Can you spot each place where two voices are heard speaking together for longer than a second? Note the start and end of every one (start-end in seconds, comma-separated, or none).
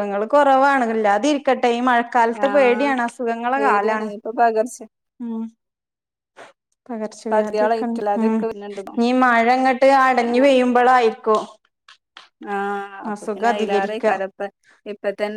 7.3-8.9